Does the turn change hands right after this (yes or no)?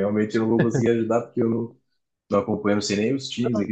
yes